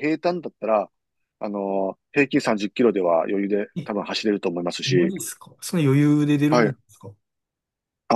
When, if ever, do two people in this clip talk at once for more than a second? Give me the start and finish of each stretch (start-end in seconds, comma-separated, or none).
none